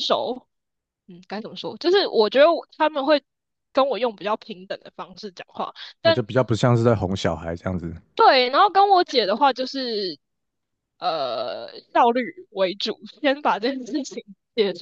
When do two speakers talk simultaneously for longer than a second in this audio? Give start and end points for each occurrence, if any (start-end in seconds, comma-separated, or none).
none